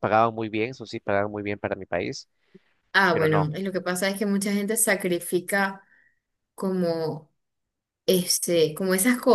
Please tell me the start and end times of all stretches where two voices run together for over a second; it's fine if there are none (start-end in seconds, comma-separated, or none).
none